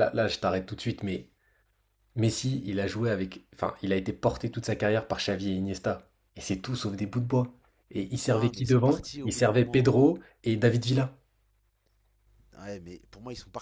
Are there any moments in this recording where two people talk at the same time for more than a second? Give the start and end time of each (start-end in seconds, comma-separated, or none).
8.3-9.9